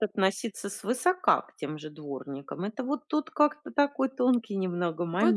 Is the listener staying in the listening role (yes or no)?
no